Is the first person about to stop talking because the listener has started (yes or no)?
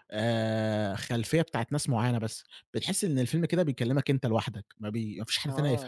yes